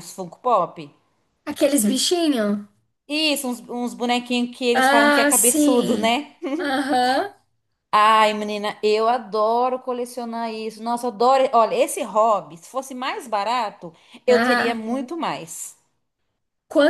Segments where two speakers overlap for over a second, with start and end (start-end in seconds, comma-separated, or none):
4.7-6.2